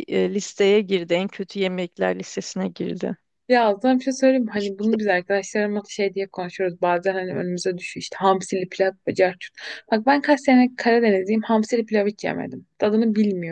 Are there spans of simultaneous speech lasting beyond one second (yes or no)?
no